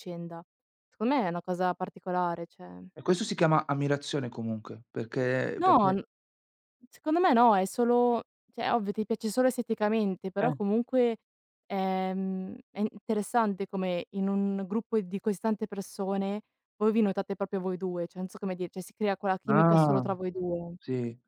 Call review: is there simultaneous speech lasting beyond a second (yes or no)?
no